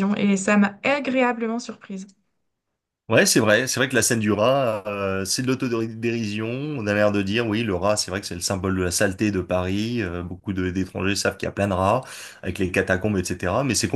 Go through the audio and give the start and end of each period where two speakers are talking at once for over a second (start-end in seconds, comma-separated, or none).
none